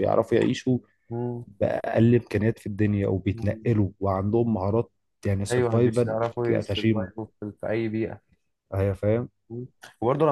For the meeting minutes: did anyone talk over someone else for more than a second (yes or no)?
yes